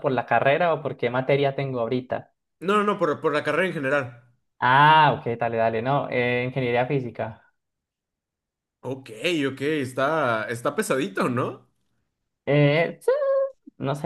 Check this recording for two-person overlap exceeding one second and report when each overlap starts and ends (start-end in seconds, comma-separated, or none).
none